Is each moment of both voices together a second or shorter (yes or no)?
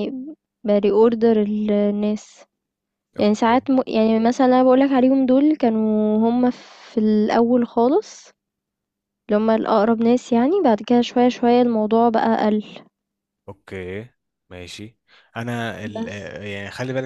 yes